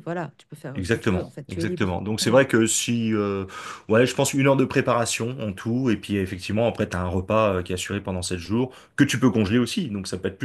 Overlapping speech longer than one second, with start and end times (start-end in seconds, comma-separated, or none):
0.7-2.4